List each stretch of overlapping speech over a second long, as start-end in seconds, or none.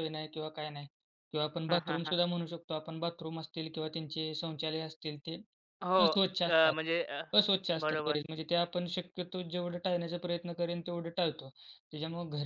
none